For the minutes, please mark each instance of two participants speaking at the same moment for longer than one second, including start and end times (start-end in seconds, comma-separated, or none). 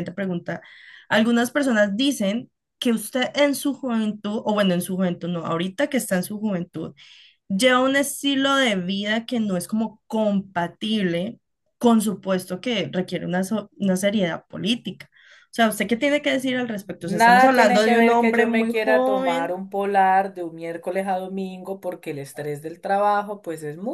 17.0-19.6